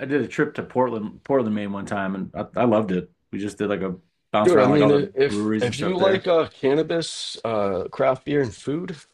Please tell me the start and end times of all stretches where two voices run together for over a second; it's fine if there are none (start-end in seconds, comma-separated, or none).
4.4-6.3